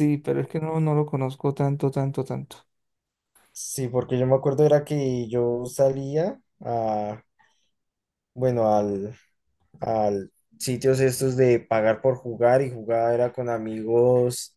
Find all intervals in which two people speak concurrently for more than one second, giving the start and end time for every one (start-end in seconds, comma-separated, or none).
none